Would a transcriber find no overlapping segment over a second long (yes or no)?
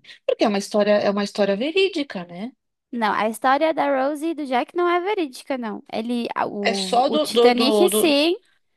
no